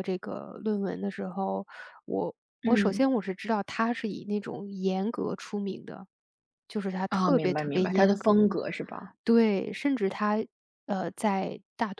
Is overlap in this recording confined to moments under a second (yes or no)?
no